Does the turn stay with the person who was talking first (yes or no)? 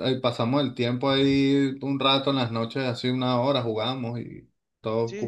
no